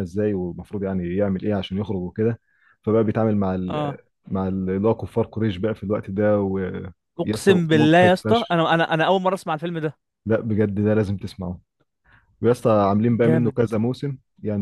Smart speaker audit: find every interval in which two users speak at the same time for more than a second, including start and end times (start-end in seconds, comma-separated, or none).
7.2-8.6